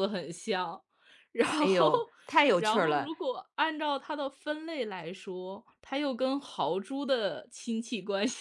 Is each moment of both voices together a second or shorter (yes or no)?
yes